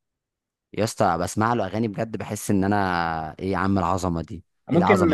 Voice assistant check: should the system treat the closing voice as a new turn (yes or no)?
yes